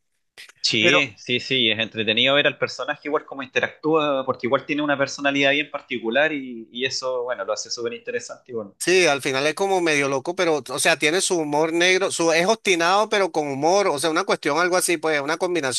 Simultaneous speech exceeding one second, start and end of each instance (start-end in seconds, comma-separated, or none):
none